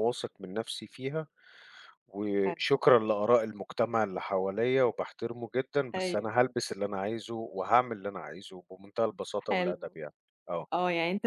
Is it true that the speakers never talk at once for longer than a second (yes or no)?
yes